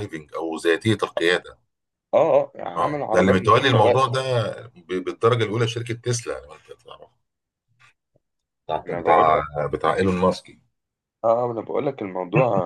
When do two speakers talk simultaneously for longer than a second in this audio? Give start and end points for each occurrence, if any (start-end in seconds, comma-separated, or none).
2.8-4.0